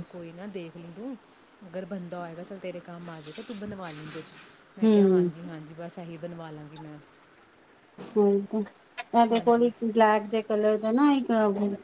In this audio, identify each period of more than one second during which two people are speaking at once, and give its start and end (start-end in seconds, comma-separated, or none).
none